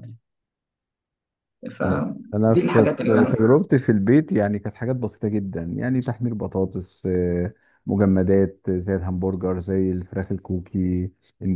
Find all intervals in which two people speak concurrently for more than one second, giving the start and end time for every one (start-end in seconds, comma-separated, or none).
1.8-3.6